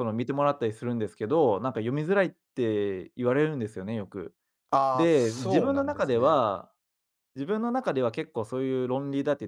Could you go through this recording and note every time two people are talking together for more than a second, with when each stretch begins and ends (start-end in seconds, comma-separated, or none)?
4.9-6.4